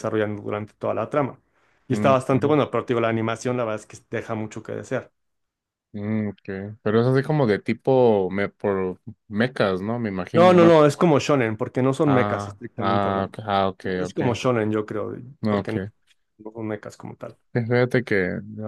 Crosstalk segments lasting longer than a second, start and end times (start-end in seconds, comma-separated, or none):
12.1-13.3